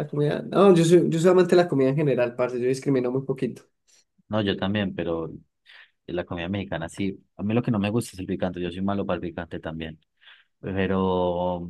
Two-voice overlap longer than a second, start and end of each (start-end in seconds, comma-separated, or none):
none